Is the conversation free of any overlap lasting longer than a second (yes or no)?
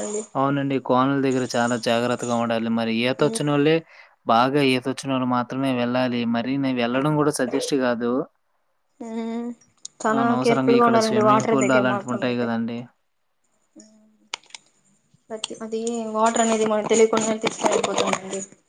no